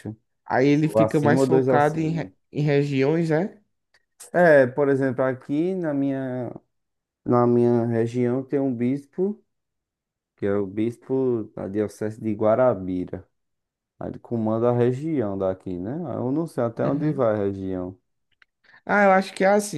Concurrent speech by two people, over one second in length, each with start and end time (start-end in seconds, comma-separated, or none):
0.8-2.3